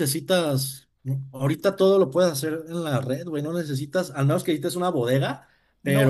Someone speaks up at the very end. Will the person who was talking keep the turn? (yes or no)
no